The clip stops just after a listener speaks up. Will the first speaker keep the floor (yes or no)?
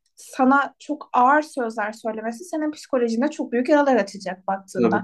yes